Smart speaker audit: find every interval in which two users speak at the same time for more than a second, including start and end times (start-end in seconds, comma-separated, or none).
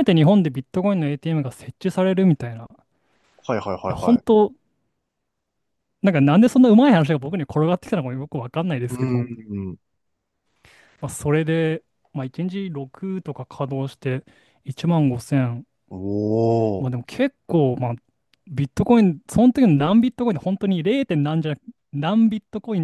none